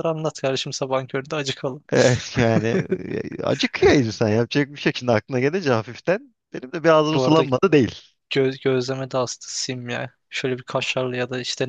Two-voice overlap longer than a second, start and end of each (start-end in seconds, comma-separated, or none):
none